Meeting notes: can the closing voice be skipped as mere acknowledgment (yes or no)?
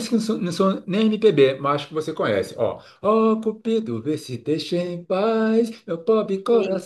yes